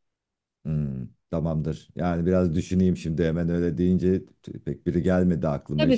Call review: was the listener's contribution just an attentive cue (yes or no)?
no